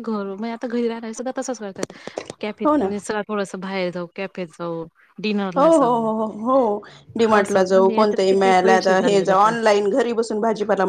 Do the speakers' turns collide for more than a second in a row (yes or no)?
yes